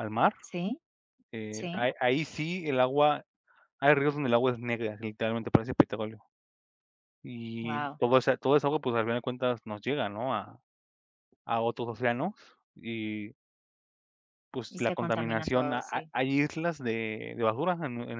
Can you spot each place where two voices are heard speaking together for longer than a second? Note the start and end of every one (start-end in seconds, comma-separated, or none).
14.7-16.1